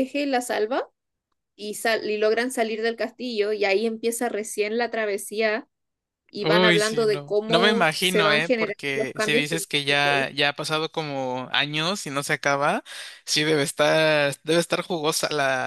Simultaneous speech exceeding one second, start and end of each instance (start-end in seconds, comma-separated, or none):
6.4-10.3